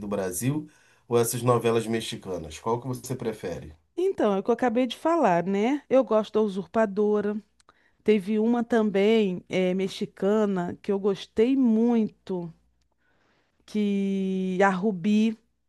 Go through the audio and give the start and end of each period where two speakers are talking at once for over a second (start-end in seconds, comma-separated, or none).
none